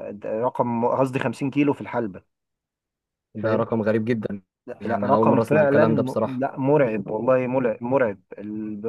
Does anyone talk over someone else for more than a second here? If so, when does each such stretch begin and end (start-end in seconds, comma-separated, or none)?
4.8-6.5